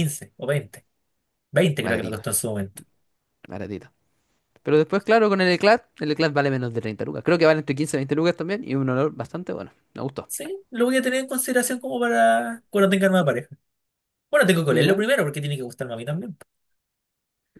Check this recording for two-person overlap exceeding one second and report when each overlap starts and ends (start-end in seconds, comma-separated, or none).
none